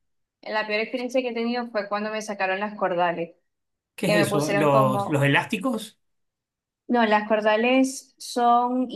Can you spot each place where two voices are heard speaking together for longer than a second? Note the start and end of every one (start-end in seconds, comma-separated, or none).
4.0-5.2